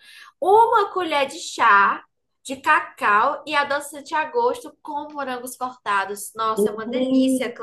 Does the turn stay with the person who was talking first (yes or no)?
no